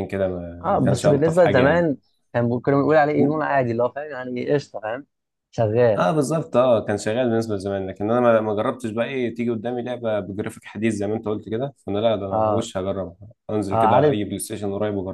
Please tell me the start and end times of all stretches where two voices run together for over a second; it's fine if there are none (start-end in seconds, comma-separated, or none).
0.6-1.9